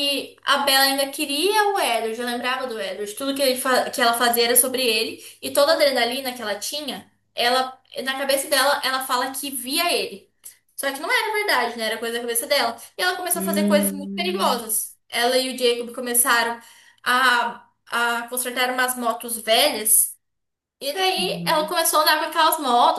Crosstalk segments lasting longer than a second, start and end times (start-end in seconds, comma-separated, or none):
13.3-14.6